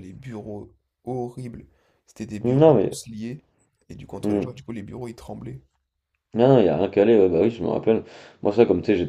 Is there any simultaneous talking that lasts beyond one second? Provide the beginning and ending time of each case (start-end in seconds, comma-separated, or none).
none